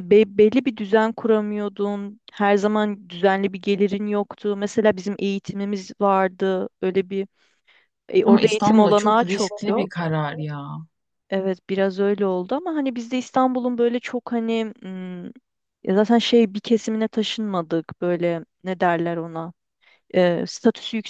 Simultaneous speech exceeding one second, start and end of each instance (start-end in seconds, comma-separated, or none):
8.2-9.9